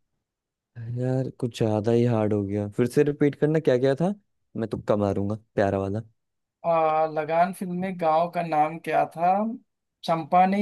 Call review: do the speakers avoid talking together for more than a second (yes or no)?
yes